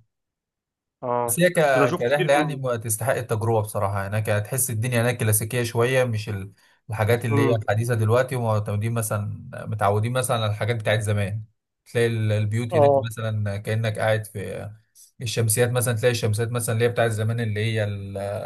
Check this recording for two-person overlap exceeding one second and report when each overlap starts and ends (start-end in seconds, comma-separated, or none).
1.2-2.6